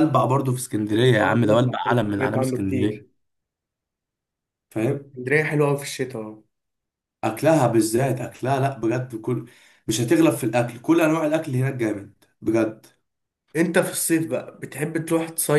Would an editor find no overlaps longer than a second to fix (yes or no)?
no